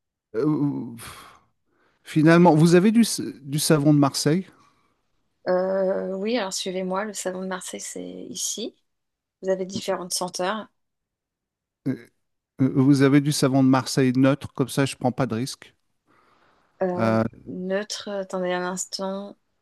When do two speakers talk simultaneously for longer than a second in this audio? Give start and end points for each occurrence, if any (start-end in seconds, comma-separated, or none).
none